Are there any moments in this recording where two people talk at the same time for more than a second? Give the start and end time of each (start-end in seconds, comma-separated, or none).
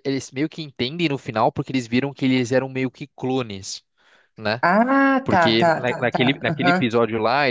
5.2-6.9